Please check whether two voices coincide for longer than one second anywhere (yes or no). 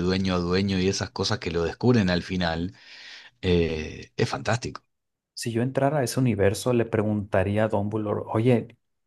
no